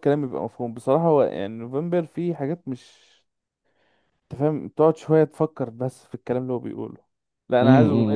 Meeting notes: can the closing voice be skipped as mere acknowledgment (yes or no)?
no